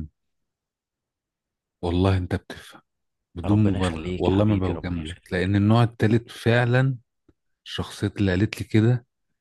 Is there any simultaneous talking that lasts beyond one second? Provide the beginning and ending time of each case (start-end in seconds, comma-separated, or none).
3.4-5.5